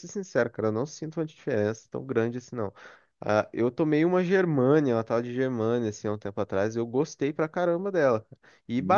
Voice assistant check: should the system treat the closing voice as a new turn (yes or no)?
no